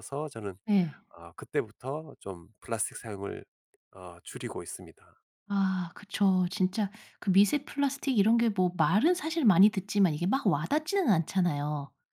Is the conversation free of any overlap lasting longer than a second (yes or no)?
yes